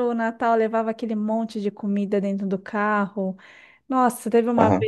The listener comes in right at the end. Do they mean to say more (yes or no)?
no